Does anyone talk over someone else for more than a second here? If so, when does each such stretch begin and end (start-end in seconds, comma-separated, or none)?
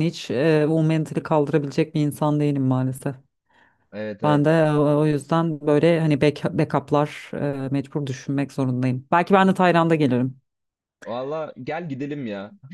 none